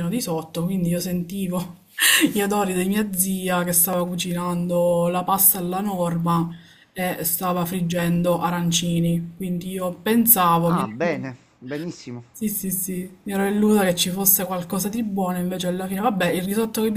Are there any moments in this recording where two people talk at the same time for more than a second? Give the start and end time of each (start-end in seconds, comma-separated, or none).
none